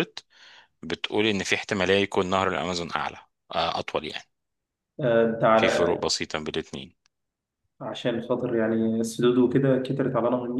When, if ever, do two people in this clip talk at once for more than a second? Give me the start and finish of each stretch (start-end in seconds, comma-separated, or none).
none